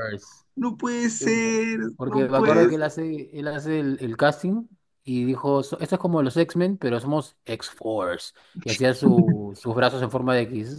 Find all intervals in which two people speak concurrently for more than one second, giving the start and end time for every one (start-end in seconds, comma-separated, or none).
1.2-2.9